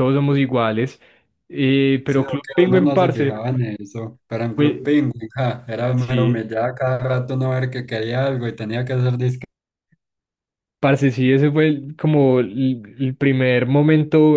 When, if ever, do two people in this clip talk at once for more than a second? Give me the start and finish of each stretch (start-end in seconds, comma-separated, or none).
2.0-3.5